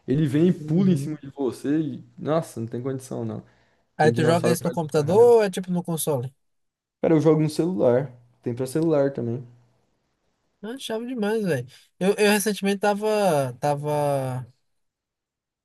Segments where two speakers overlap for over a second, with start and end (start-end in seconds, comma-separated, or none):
4.0-5.3